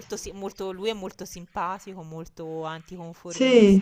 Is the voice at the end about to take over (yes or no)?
no